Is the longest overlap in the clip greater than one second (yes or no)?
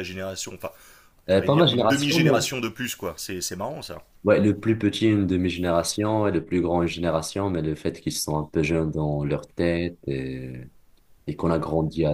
yes